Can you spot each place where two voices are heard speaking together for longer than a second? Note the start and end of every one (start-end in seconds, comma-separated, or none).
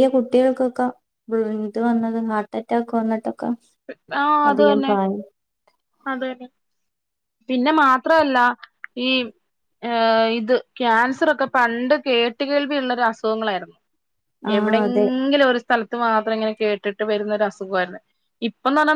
none